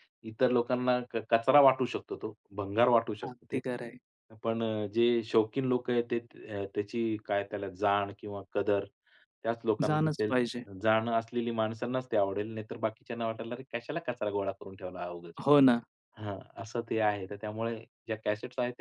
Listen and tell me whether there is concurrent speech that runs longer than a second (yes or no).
no